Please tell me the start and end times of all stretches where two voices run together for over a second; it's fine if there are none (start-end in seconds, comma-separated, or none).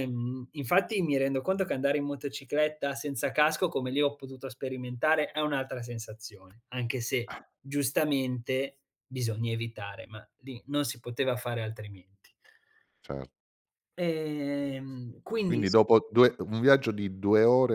none